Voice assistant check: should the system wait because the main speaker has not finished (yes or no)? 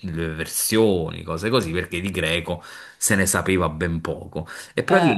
yes